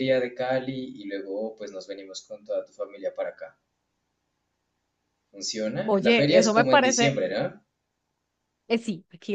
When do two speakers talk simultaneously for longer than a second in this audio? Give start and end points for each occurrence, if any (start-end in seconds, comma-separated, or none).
5.8-7.1